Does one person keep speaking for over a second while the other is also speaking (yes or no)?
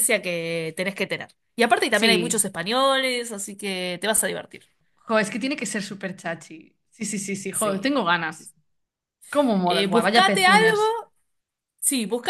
yes